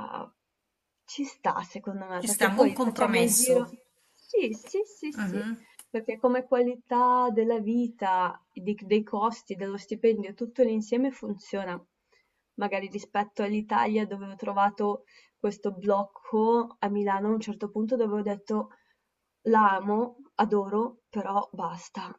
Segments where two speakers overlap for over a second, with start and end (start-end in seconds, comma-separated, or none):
2.2-3.5